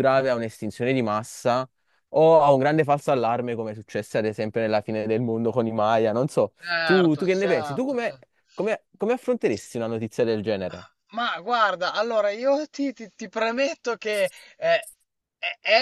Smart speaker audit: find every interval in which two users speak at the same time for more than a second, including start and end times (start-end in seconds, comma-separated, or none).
6.6-8.2